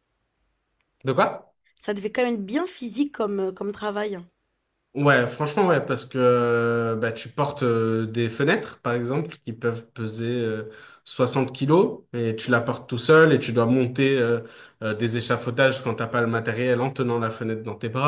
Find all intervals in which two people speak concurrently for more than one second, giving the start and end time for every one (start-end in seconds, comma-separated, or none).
none